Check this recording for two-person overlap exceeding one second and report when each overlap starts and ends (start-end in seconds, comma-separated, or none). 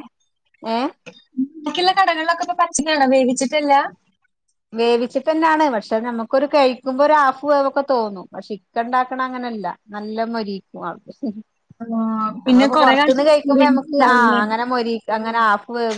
12.4-14.4